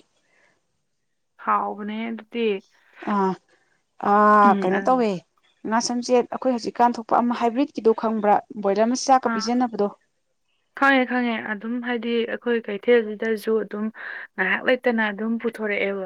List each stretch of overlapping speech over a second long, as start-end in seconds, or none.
none